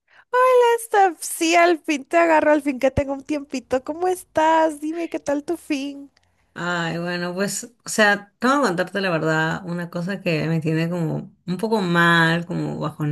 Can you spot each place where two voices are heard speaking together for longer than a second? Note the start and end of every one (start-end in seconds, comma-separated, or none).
none